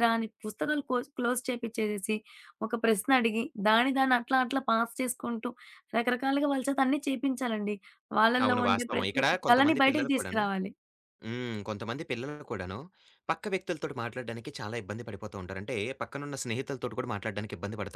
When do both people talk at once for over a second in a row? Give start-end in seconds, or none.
8.4-10.4